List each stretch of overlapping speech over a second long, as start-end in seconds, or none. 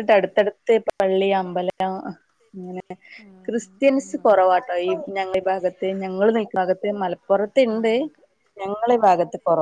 3.5-4.7